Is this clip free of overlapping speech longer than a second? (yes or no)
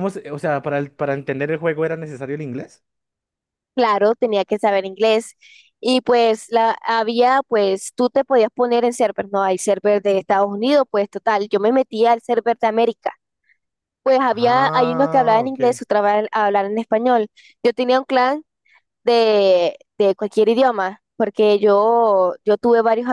no